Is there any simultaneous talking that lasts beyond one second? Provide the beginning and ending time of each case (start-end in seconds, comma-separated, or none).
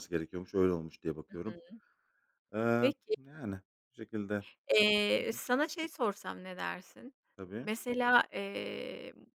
none